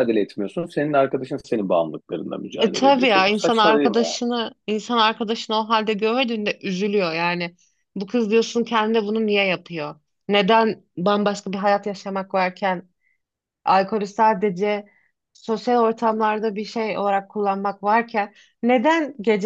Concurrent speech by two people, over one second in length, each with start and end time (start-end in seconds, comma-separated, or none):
2.6-4.0